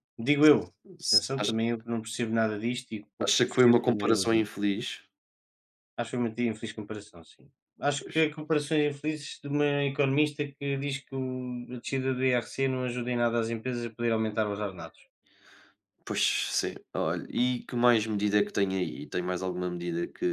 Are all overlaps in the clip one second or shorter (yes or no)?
no